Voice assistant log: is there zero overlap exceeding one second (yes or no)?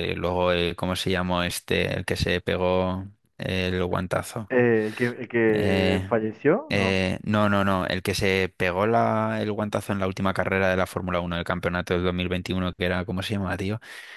yes